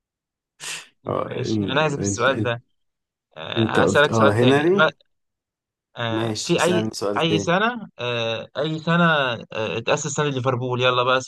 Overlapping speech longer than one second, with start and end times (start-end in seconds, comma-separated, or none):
1.2-2.5, 3.6-4.9, 6.1-7.6